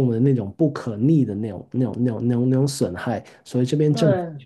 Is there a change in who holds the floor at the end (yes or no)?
no